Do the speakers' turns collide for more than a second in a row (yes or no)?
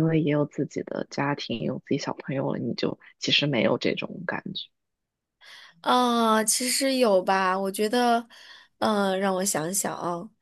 no